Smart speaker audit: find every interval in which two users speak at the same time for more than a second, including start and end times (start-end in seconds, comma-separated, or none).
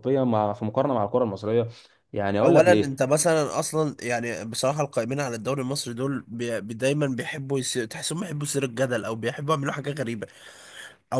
none